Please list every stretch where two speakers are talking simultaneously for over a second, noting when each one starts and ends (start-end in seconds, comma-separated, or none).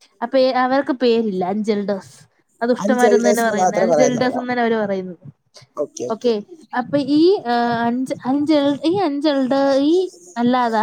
2.8-4.4